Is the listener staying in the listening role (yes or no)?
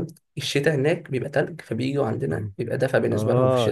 no